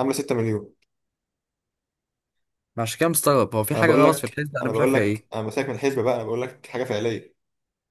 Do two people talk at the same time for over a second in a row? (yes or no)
yes